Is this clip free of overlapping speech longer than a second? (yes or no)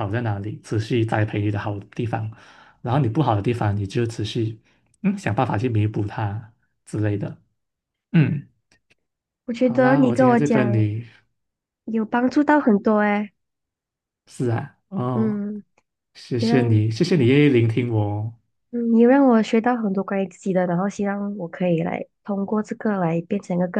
no